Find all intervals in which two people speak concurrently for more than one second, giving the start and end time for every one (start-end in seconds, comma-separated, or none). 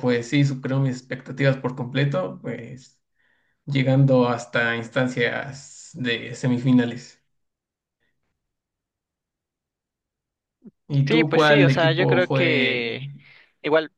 11.1-13.0